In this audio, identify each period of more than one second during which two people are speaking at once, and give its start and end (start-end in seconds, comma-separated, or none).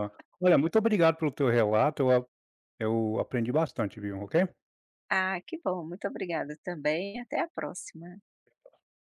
none